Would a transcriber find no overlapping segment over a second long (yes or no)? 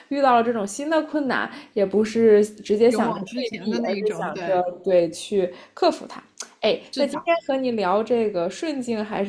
no